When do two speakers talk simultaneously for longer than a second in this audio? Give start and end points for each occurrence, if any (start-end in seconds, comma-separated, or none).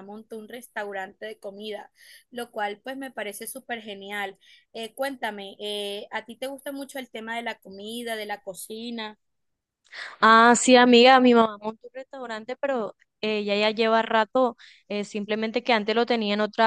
none